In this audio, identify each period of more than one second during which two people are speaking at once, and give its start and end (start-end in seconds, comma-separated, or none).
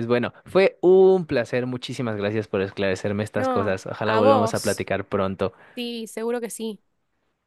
3.4-4.9